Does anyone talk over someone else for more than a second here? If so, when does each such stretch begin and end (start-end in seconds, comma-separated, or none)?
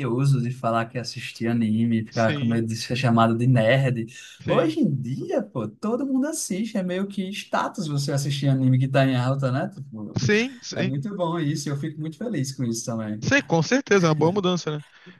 none